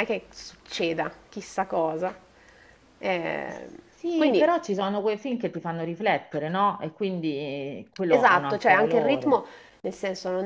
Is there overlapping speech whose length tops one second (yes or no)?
yes